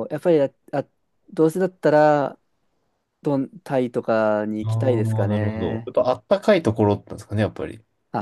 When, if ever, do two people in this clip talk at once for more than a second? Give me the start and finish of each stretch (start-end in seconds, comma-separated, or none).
4.6-5.9